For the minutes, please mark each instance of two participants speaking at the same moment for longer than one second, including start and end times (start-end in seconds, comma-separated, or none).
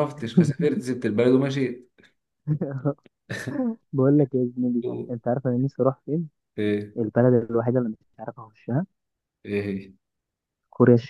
none